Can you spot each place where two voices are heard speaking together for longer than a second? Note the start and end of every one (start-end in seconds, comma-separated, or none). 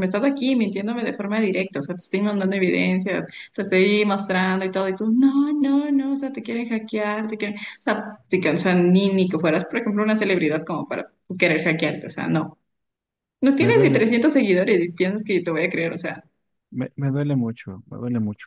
none